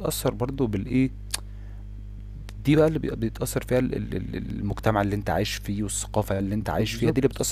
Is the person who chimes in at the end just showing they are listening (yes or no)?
no